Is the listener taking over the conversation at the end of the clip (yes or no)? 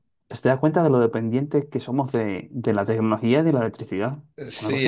yes